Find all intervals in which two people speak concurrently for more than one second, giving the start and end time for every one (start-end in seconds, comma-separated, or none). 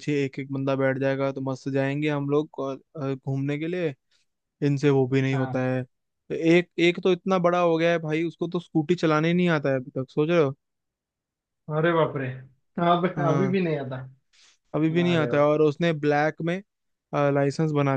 none